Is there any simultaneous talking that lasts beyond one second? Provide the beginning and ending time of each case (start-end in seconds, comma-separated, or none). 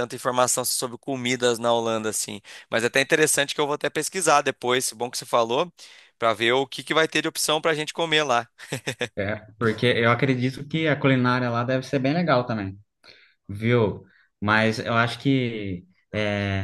none